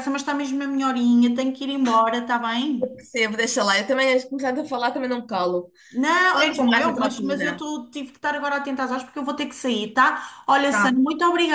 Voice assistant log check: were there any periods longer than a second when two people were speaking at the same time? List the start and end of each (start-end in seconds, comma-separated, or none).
6.3-7.6